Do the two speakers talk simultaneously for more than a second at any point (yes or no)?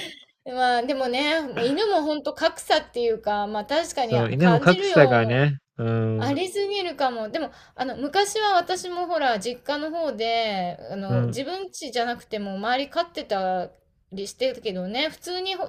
yes